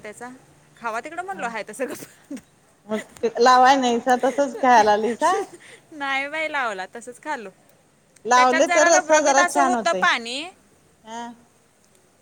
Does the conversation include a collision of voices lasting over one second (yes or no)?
yes